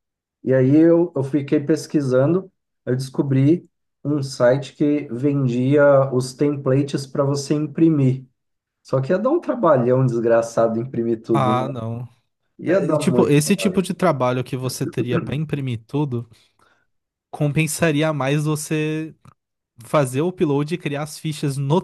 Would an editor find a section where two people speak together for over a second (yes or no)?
yes